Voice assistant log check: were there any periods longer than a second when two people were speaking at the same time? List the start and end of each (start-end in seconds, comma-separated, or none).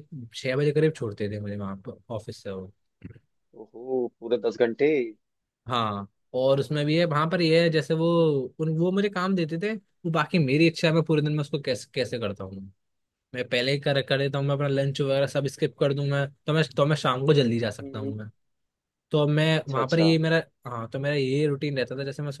none